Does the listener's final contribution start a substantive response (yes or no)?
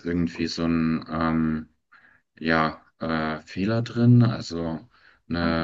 no